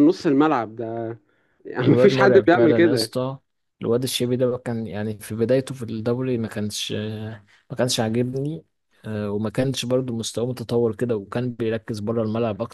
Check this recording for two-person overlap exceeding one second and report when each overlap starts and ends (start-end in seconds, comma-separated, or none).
1.8-3.1